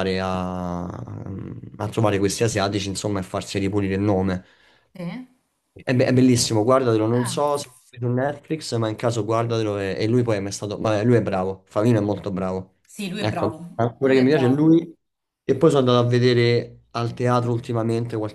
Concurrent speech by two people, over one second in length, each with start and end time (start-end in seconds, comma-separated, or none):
13.2-14.7